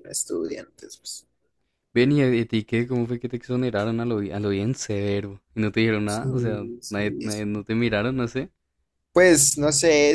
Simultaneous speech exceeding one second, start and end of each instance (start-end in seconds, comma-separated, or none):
6.0-7.6